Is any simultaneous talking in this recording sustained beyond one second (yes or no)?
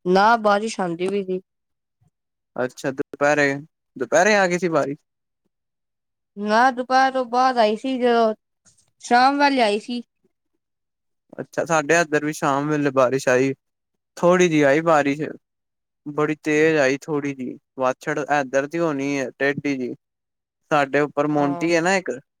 no